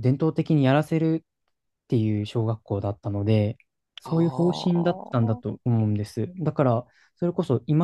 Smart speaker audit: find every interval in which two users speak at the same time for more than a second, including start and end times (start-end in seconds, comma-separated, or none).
4.0-5.5